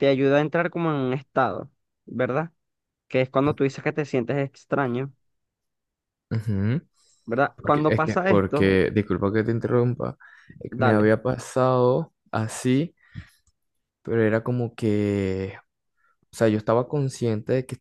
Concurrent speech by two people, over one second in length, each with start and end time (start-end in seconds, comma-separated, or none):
7.5-8.8